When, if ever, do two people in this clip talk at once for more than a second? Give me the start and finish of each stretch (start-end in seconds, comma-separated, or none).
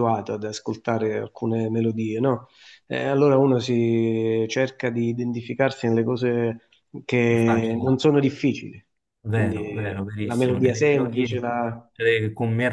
10.2-11.4